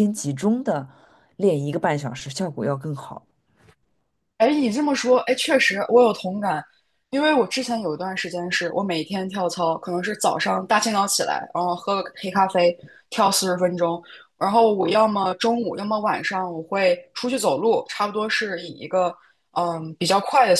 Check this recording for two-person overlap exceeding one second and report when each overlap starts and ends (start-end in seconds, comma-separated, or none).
none